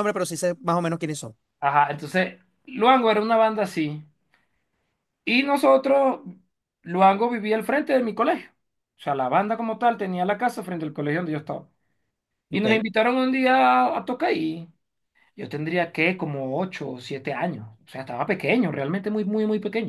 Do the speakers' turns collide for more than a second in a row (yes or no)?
no